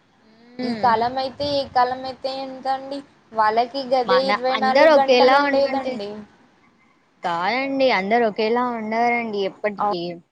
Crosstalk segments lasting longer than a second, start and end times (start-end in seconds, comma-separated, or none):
4.1-5.9